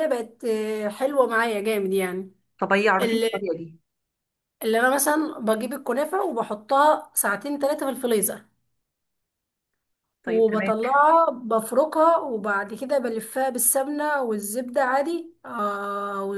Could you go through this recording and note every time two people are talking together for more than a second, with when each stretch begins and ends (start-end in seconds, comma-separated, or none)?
none